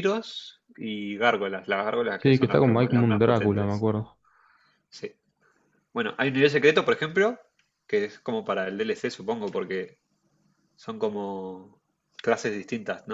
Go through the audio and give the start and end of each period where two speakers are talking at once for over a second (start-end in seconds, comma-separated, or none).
2.2-3.9